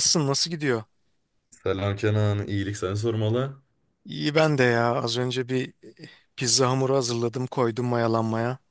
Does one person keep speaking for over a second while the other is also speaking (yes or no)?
no